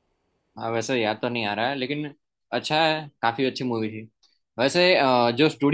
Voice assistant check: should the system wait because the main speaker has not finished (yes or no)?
yes